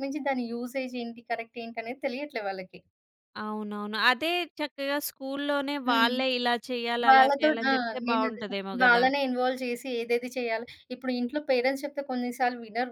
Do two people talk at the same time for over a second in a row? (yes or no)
yes